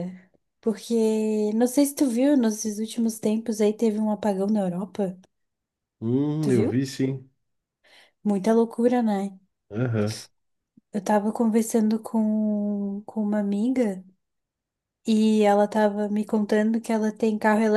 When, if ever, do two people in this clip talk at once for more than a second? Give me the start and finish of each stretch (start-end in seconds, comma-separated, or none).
none